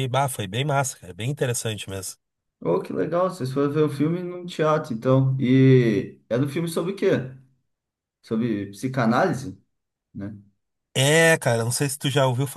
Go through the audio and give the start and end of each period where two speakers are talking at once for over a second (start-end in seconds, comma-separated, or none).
none